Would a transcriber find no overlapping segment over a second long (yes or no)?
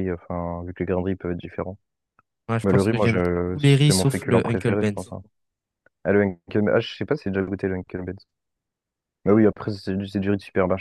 no